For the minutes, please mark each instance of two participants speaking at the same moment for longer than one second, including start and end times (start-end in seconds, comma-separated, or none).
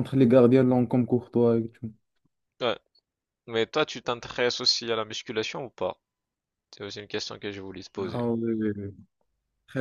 none